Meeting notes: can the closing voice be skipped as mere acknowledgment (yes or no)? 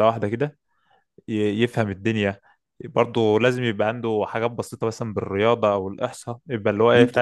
no